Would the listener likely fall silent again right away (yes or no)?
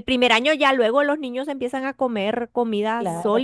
no